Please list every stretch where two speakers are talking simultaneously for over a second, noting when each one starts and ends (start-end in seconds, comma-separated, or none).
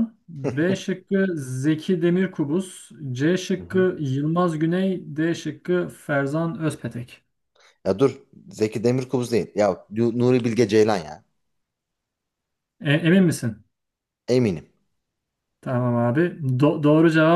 none